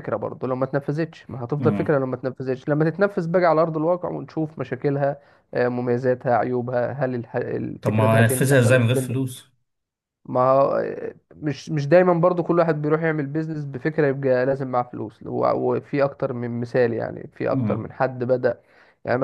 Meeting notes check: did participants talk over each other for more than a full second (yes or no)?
yes